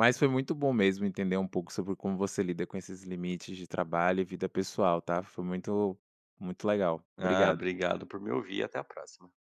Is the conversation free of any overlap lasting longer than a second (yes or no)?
yes